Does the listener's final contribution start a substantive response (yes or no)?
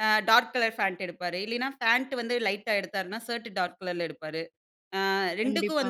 no